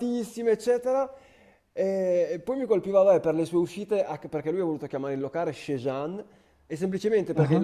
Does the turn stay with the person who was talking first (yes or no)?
yes